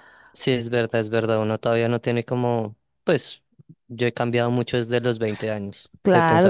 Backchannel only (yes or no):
no